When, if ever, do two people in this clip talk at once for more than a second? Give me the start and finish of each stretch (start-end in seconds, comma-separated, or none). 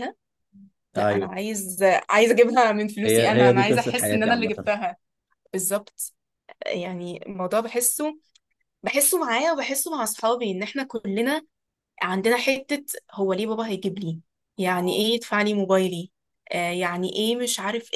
3.0-4.7